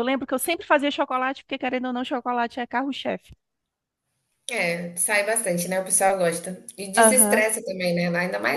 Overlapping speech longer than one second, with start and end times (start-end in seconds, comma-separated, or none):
none